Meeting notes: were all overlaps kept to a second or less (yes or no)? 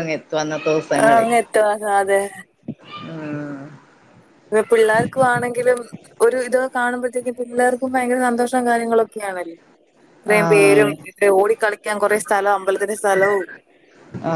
yes